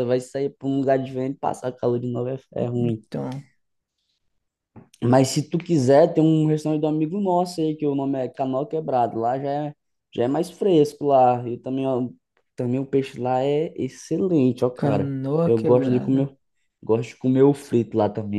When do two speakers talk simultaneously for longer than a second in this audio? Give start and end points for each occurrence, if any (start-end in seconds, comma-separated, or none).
14.8-16.3